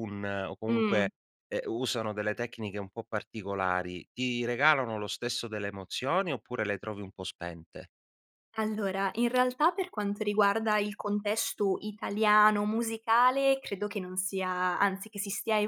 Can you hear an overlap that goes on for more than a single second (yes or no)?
no